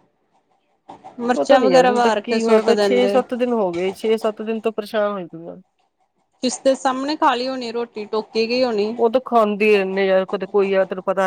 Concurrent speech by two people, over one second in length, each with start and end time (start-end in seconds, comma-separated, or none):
1.4-3.2